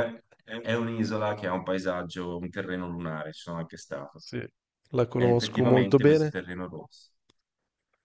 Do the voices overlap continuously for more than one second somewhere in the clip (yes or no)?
yes